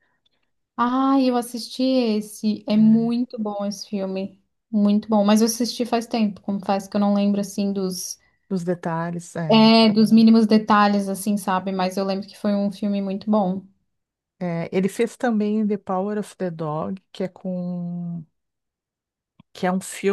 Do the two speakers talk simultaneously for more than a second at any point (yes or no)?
no